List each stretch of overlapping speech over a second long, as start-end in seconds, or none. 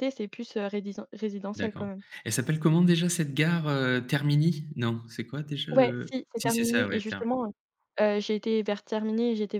5.7-7.3